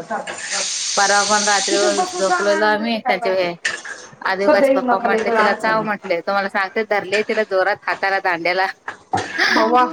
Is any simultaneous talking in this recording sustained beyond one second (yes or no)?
yes